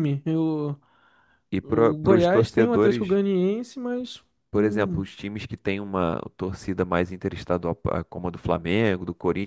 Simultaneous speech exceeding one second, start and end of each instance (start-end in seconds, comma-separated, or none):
1.6-3.2